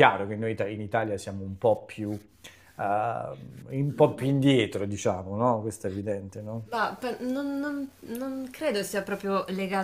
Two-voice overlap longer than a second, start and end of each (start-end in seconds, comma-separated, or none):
none